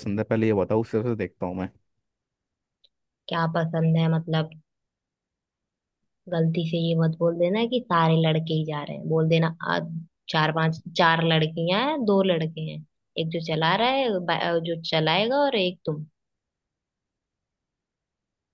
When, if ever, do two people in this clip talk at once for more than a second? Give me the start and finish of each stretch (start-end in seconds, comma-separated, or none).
none